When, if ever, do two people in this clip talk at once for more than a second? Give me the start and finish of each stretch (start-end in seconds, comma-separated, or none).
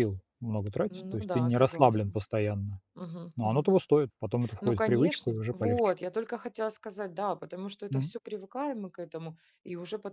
0.9-2.2, 4.6-5.9